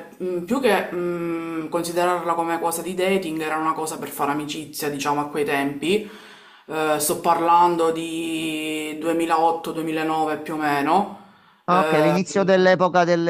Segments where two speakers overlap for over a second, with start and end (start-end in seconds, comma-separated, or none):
none